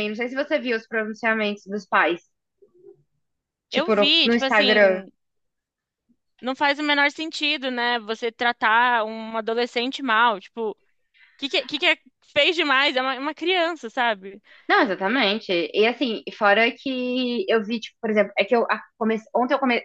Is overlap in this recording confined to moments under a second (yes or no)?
no